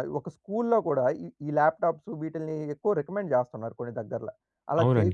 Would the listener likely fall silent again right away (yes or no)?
no